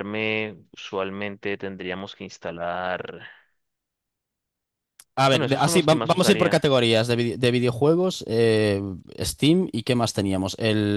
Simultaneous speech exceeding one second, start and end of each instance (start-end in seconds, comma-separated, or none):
5.3-6.6